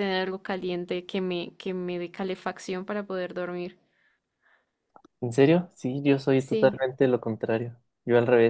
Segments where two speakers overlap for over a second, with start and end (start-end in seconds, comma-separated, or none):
none